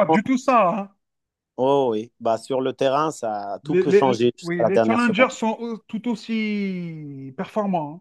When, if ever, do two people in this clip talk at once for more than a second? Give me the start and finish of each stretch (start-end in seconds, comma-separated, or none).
3.6-5.3